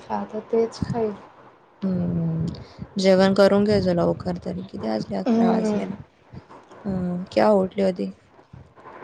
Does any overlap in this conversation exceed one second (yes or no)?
no